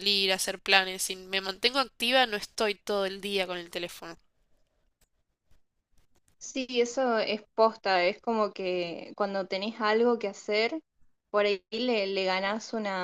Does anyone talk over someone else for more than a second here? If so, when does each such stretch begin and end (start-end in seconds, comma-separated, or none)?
none